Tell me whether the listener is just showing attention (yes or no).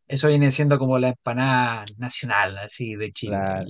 no